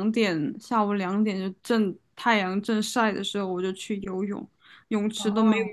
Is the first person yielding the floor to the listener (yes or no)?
no